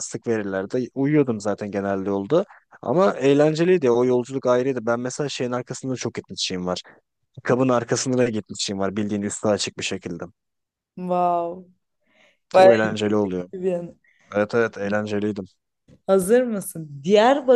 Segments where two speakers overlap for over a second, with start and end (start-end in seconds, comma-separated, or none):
none